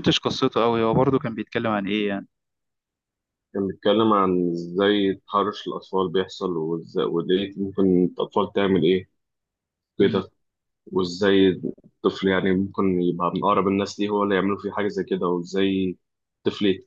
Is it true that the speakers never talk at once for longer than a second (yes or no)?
yes